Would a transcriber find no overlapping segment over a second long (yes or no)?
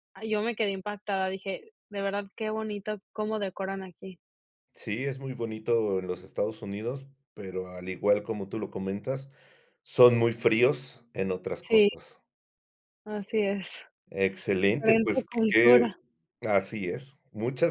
no